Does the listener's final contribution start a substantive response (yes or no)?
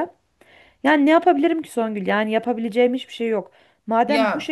no